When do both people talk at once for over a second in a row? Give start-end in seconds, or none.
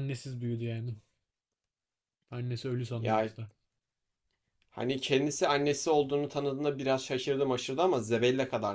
none